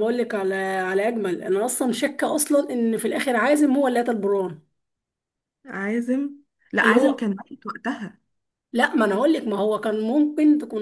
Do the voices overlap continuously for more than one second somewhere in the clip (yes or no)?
no